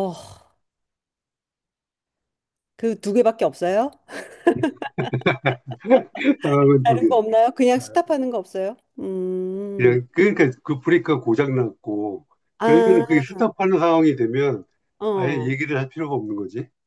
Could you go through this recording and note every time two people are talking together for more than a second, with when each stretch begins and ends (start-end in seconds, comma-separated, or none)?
none